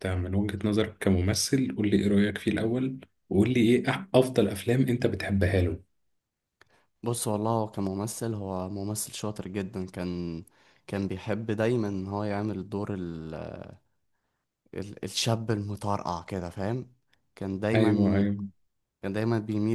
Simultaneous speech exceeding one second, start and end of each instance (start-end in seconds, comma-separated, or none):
none